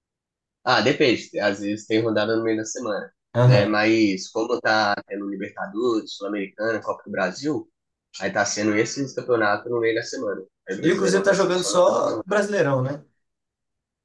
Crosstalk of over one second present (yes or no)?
yes